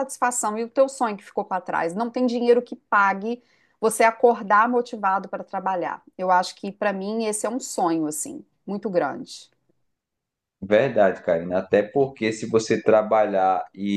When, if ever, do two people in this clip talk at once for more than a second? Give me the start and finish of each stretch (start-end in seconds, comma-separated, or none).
none